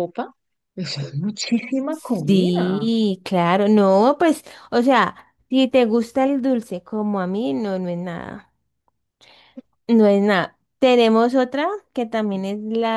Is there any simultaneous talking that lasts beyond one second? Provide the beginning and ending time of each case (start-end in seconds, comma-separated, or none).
none